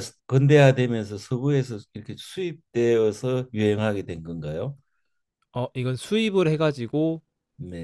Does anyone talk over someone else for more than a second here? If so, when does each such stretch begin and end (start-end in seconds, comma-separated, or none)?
none